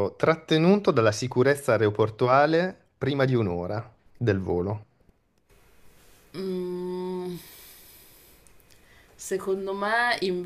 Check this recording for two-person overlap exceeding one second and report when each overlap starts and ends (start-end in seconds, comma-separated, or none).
none